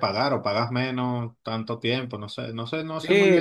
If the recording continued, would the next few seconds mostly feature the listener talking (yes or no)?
yes